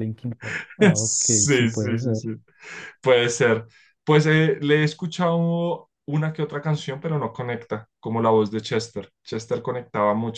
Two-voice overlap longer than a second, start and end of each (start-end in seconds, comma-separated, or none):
0.9-2.3